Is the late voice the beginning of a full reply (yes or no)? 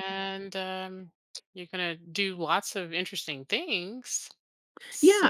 yes